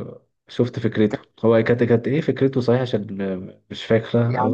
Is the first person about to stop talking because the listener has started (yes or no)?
yes